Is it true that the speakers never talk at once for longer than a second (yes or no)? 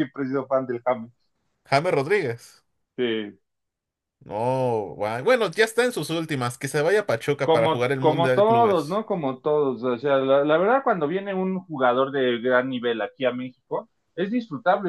no